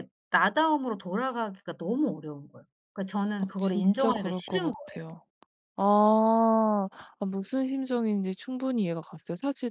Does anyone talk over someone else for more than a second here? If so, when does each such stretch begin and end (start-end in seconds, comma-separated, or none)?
3.4-4.7